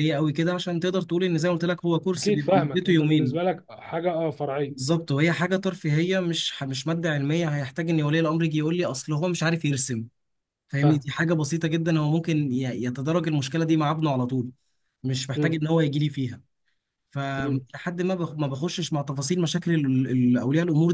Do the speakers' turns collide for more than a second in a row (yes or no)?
yes